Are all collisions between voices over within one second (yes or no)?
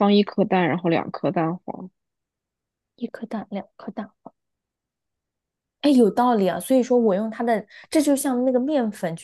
yes